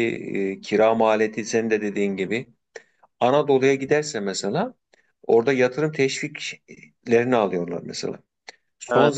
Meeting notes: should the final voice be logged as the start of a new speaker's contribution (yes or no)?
no